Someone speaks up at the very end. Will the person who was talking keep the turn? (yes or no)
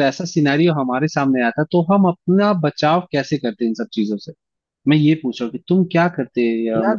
no